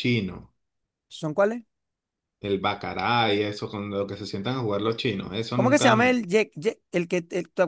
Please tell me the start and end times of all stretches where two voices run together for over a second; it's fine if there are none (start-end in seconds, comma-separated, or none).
none